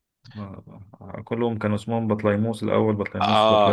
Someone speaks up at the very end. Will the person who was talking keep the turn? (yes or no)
no